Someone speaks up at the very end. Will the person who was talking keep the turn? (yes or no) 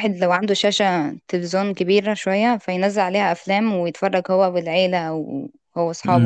no